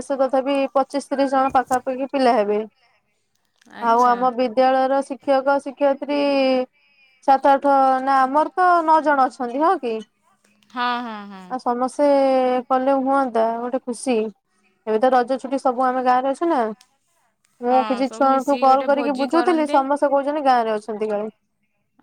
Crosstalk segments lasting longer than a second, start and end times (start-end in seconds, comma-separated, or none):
17.7-19.8